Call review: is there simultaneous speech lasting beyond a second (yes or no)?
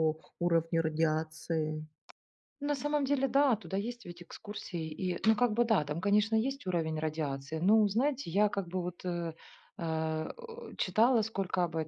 no